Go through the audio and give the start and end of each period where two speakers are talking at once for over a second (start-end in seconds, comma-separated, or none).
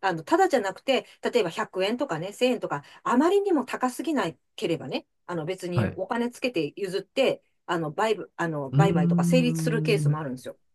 8.7-10.2